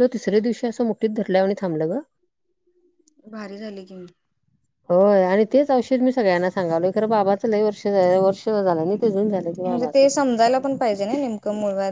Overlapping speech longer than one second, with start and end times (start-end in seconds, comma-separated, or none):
none